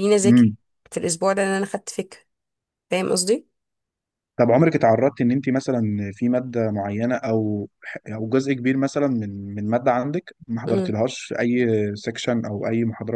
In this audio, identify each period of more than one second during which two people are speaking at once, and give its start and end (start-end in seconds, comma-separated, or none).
none